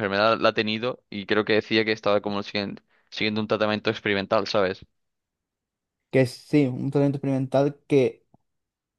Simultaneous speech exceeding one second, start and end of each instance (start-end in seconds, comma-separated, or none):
none